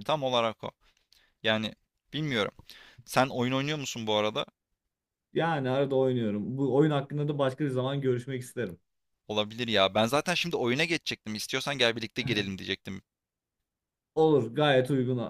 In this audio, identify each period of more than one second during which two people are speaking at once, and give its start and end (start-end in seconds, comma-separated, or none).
none